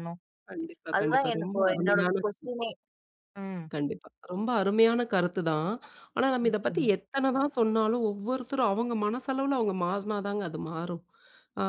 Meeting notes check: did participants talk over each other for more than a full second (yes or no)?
yes